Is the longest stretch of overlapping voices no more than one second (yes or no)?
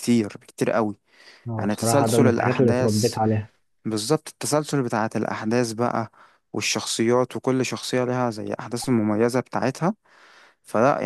no